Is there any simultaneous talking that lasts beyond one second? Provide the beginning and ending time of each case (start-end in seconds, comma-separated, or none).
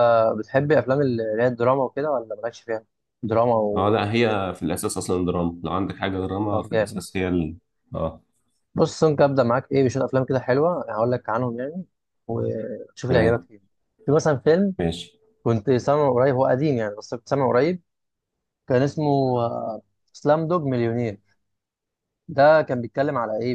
none